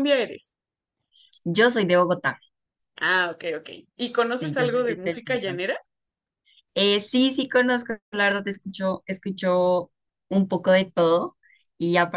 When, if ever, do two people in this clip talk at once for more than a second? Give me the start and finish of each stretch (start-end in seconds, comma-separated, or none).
4.4-5.6